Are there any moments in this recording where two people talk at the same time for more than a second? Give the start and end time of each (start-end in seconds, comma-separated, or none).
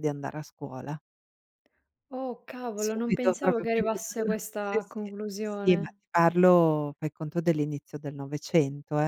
2.8-6.0